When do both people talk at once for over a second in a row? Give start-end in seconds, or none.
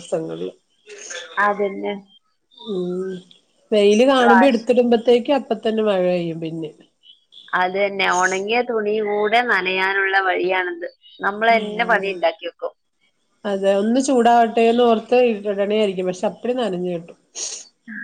none